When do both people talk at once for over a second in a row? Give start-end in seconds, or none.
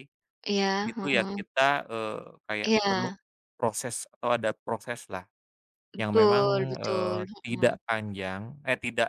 6.0-7.8